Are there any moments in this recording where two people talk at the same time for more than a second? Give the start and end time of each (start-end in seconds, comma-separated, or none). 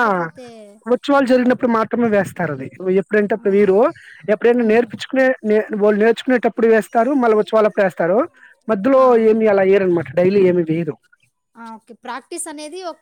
none